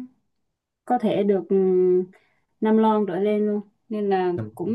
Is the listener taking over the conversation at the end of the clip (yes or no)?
no